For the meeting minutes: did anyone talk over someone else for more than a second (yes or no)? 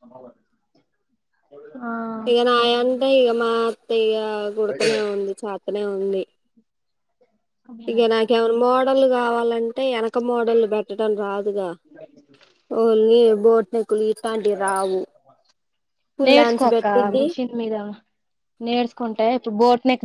no